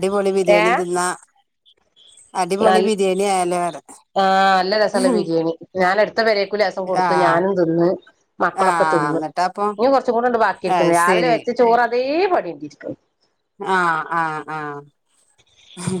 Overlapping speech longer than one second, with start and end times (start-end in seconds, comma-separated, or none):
none